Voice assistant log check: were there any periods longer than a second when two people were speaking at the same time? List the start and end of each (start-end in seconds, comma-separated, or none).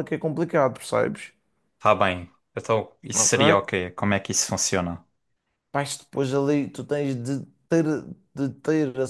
none